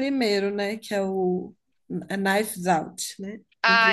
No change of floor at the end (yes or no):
no